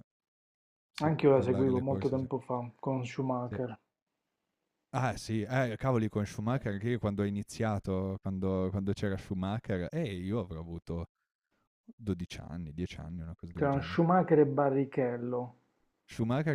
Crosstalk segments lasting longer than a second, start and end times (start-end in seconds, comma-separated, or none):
1.0-2.2